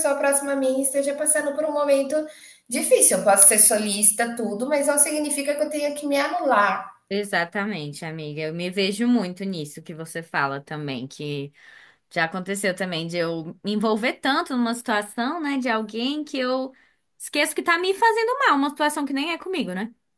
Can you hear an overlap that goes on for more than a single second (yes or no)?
no